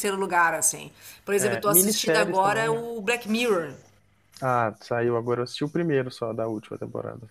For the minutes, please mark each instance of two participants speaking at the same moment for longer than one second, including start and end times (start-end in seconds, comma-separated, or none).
1.4-2.8